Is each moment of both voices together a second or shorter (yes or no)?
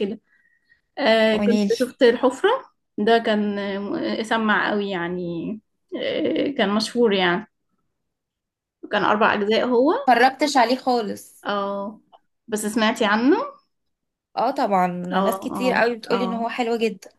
no